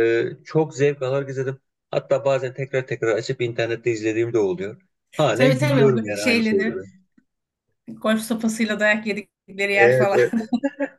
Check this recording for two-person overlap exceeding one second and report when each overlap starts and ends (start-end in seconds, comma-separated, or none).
5.3-6.7